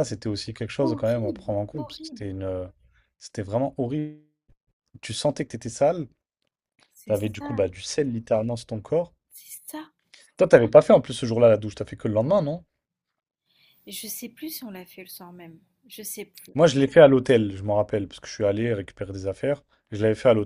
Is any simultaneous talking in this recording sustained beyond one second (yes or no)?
yes